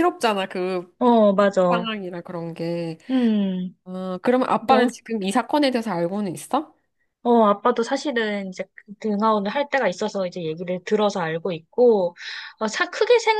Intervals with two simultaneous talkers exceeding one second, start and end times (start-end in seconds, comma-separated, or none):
none